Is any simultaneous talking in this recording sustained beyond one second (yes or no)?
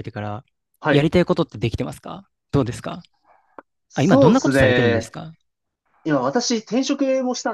yes